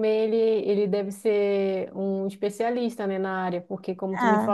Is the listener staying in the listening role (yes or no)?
yes